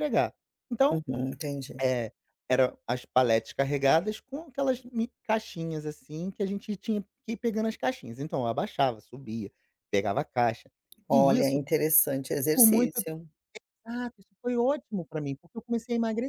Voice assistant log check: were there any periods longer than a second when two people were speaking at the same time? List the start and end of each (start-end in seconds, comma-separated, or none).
none